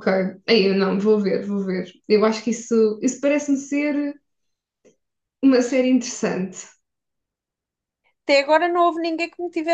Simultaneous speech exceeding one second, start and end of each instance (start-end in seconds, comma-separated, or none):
none